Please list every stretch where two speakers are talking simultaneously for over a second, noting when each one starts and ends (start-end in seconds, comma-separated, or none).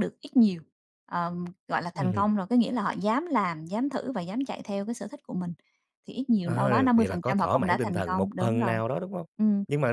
6.4-8.7